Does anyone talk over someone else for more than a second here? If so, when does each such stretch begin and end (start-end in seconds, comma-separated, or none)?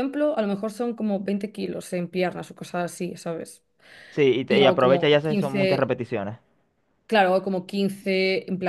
4.5-6.0